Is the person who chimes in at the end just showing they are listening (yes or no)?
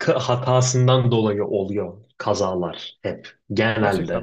yes